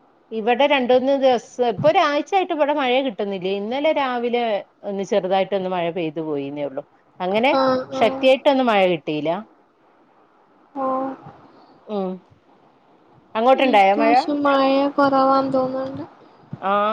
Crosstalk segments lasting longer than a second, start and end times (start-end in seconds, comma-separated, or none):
none